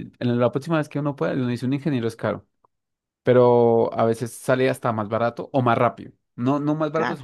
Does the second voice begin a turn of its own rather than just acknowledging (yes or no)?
no